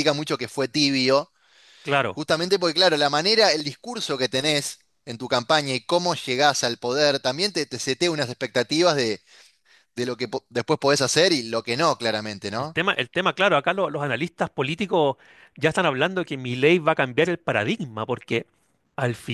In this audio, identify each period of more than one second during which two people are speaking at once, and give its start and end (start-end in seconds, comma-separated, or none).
none